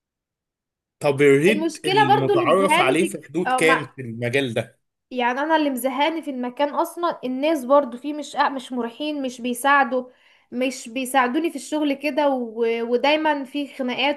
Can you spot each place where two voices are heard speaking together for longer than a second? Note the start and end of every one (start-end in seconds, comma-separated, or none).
1.5-4.0